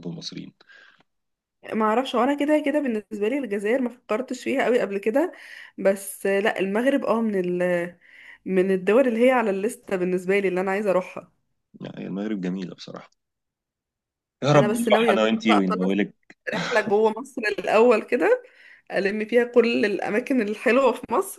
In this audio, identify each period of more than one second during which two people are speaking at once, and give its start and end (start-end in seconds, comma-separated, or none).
14.5-15.9